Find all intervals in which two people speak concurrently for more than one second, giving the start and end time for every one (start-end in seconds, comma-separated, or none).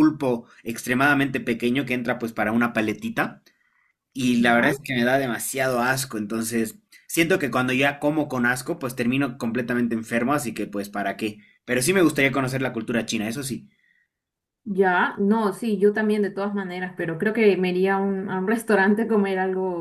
none